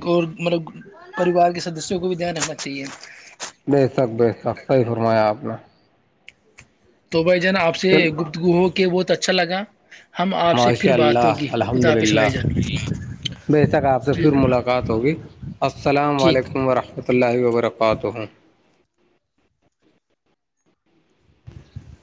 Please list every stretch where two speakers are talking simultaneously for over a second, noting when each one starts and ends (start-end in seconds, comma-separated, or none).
10.5-12.3